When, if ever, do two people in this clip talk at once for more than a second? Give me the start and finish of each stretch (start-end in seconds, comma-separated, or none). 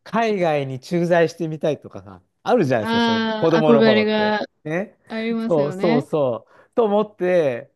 2.8-4.4